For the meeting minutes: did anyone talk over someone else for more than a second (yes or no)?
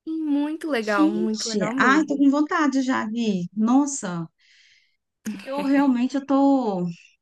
yes